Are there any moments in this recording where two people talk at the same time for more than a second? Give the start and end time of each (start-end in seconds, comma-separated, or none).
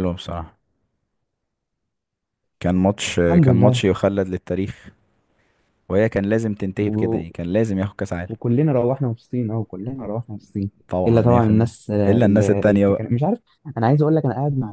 11.1-13.0